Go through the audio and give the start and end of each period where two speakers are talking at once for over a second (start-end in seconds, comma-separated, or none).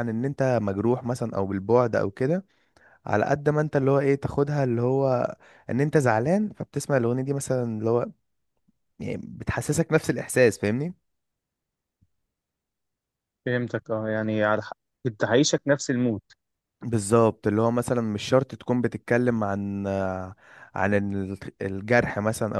none